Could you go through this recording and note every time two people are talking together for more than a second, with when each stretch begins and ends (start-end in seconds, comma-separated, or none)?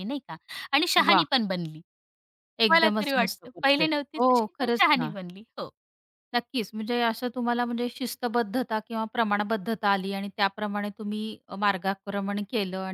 2.7-5.1